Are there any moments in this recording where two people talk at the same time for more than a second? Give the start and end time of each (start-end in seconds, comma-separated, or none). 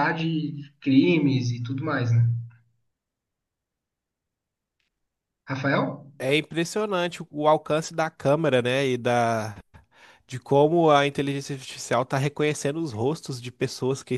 none